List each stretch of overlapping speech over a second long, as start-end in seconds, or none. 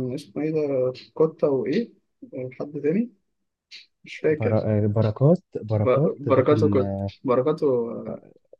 5.7-7.1